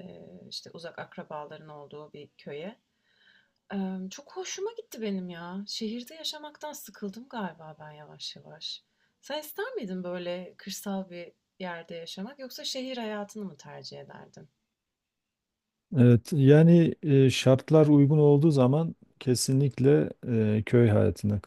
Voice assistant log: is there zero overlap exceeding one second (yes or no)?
yes